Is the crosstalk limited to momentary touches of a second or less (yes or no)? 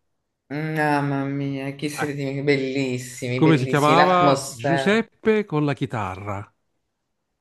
no